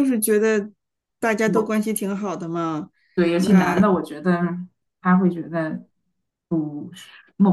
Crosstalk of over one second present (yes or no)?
no